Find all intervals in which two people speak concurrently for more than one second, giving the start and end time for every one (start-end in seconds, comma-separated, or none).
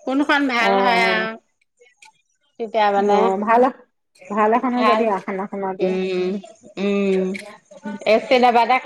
none